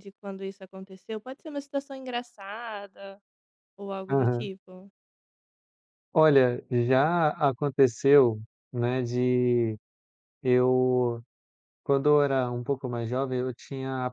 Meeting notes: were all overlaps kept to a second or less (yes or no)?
yes